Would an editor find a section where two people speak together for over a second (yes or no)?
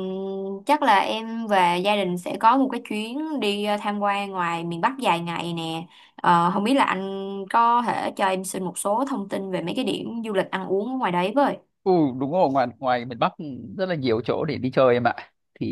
no